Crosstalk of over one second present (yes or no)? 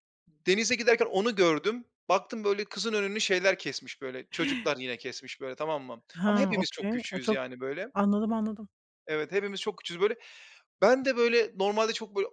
yes